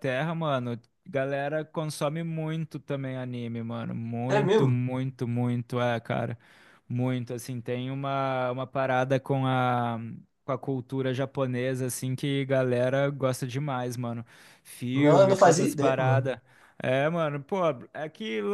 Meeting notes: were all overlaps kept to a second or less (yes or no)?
no